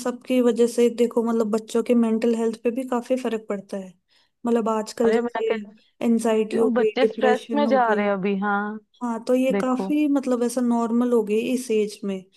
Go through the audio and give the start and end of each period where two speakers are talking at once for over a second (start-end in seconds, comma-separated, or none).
6.6-8.1